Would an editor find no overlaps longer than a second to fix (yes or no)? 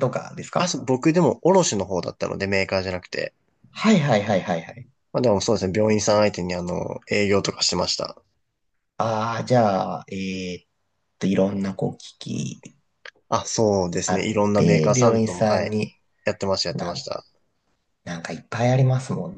no